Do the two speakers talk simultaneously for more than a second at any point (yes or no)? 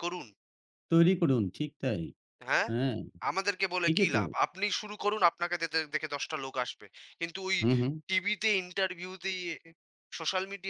no